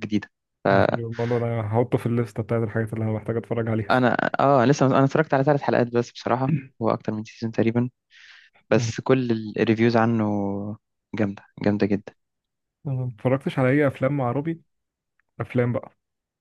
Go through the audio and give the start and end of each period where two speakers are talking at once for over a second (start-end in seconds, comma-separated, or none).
none